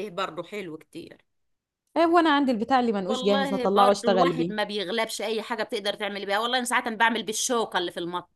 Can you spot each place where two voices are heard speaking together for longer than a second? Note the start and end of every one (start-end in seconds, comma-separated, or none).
3.1-4.5